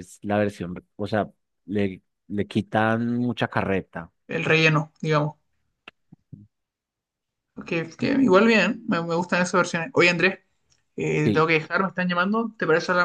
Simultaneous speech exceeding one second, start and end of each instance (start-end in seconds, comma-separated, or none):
none